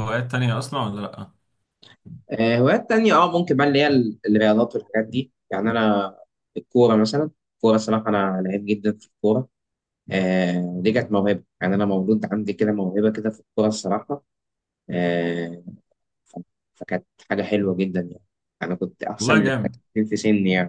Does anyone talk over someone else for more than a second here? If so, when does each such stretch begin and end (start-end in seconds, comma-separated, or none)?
none